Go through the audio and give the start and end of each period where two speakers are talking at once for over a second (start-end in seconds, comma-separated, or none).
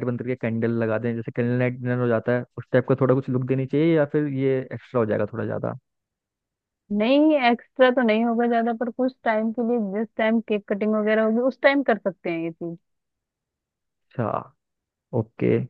none